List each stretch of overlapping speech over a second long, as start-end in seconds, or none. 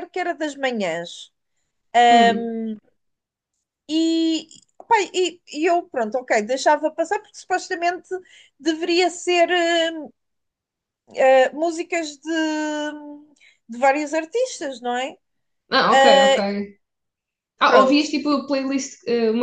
none